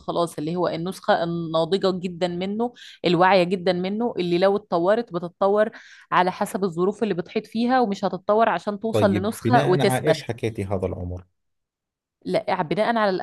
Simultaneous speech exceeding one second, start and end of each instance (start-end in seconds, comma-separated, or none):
8.9-10.2